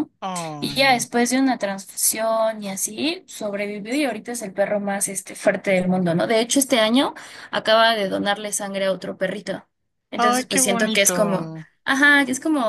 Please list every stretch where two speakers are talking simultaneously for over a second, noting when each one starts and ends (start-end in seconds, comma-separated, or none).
10.2-11.7